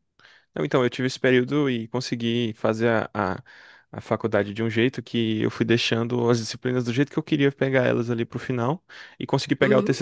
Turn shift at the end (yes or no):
no